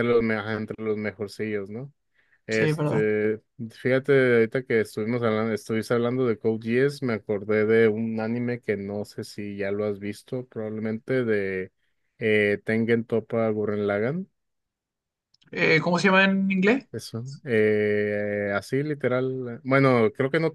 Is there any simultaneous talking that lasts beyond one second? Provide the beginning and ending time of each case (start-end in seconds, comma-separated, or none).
none